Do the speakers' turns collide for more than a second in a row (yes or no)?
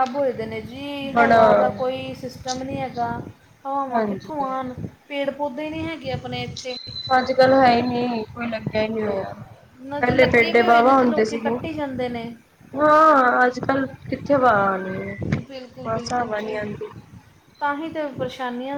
yes